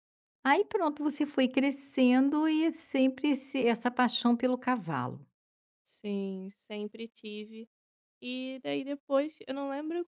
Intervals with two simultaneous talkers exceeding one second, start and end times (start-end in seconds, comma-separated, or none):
none